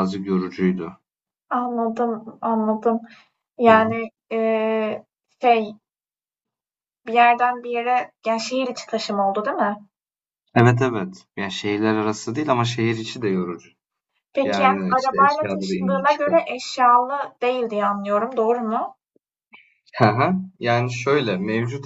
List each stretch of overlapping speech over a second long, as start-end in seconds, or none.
14.4-16.4